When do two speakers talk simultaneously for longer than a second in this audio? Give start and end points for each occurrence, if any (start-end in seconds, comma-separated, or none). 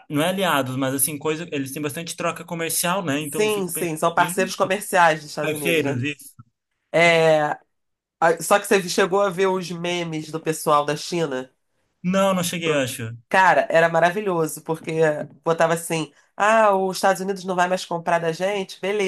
3.2-4.5